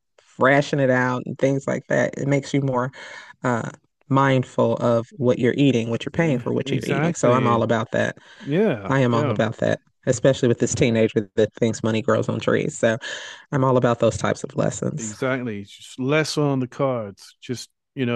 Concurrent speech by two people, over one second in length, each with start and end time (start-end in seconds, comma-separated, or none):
6.1-7.6